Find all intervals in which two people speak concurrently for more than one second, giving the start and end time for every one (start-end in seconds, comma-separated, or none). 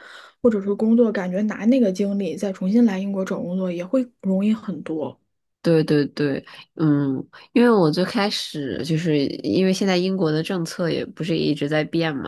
none